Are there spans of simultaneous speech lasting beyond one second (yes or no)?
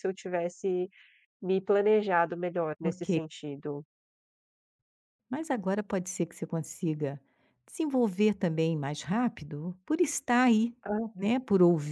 no